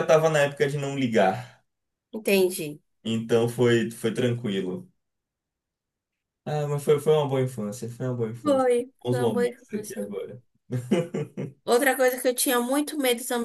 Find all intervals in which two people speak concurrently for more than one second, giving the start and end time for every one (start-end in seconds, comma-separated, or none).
8.4-10.1